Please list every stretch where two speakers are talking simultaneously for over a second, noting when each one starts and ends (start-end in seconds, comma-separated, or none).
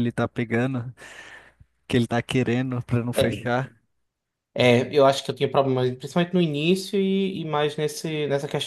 none